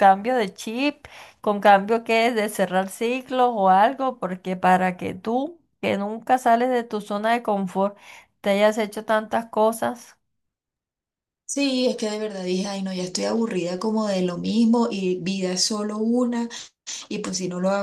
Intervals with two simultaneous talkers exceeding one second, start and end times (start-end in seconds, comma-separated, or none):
none